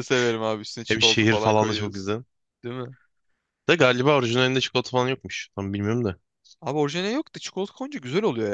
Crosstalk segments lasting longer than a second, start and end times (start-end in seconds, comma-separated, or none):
0.9-2.1